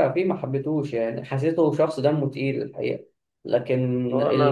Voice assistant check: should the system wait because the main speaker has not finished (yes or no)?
no